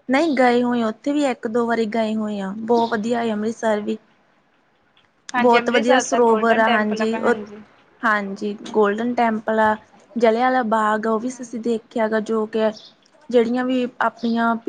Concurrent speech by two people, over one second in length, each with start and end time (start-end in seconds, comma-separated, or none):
5.4-7.4